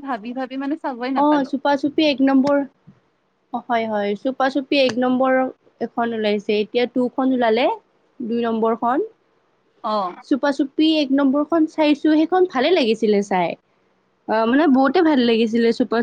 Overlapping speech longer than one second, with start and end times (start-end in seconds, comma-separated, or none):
none